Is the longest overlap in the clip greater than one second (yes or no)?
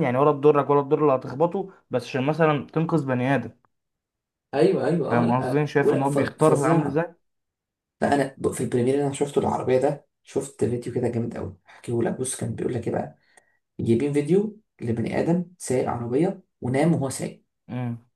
yes